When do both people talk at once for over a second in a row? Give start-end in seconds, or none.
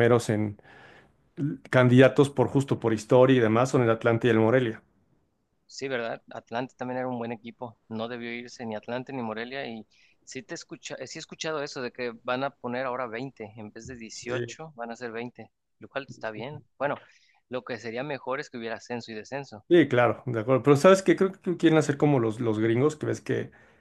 none